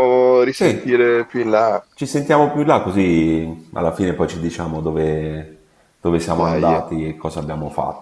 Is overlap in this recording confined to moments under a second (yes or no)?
yes